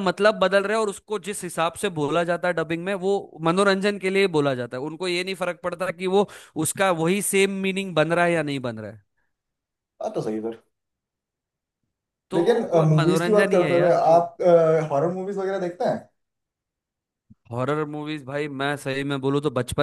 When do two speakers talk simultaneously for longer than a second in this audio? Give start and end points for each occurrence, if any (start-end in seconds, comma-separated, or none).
12.3-14.2